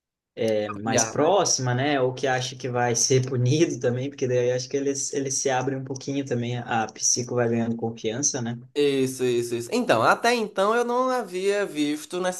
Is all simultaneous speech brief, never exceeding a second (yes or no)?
yes